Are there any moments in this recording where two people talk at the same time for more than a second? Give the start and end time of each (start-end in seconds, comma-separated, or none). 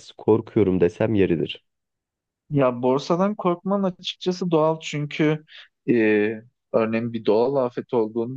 none